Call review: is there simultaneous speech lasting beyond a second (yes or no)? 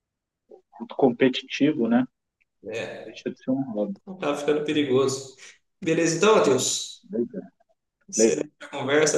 no